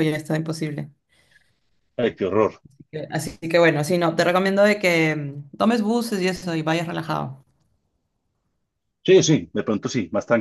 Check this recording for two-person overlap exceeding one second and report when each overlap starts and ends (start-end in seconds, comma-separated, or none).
none